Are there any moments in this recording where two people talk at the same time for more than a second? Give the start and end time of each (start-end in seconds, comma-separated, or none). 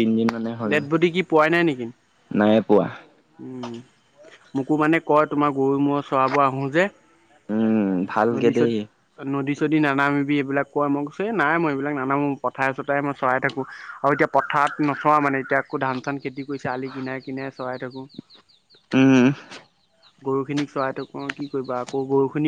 none